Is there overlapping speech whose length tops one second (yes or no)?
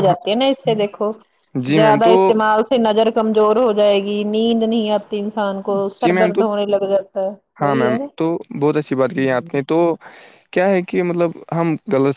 no